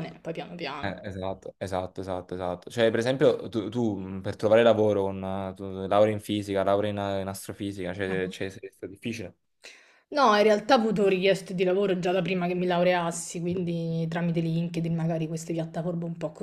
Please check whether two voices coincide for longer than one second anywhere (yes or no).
no